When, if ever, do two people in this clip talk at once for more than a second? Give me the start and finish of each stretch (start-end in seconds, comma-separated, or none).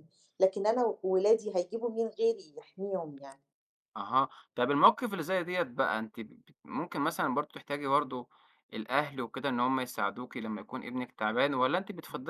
none